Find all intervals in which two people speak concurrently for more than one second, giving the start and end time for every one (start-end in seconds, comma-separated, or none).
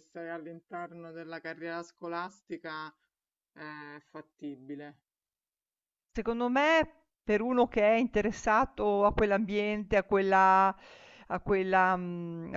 none